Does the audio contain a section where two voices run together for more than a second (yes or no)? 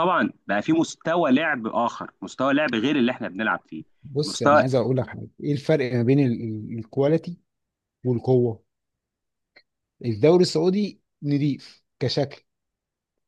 no